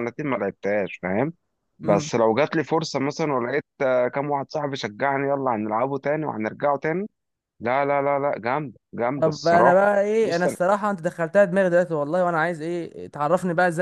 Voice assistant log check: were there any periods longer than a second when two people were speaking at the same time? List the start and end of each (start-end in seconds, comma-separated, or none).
9.2-10.6